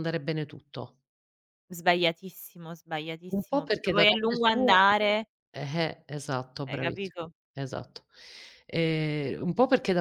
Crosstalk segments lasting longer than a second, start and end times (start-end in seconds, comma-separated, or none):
3.3-4.8